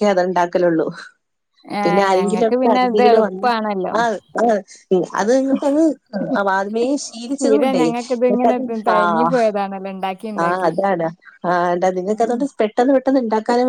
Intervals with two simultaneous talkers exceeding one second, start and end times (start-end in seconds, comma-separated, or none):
1.9-3.5